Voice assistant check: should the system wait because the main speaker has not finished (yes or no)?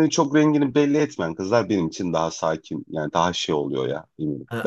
no